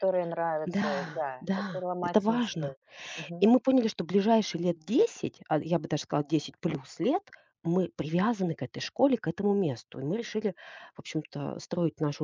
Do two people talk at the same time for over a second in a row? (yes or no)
yes